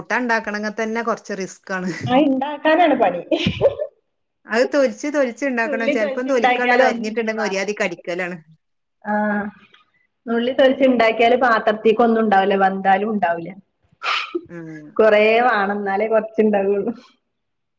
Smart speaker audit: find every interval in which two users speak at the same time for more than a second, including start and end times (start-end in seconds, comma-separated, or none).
5.7-8.0